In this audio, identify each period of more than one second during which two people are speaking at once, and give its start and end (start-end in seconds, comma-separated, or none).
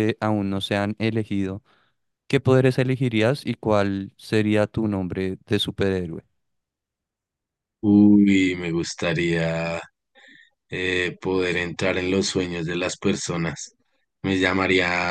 none